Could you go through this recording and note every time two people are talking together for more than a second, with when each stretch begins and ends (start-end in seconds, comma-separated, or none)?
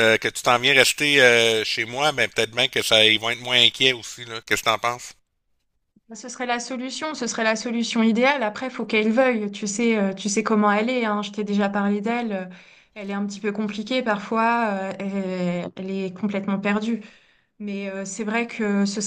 none